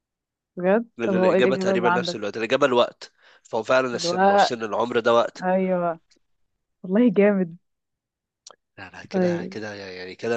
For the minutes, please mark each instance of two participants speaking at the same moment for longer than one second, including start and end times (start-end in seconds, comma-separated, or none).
1.0-2.2